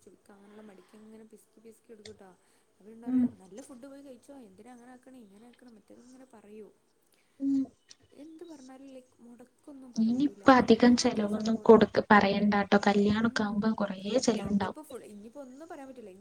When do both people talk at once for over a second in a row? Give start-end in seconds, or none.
10.1-11.8